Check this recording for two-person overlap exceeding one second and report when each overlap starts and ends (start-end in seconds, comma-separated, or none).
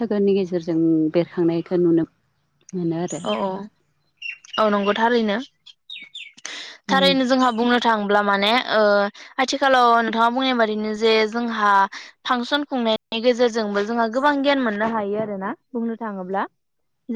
none